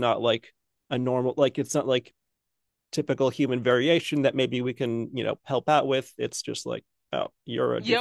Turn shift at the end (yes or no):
yes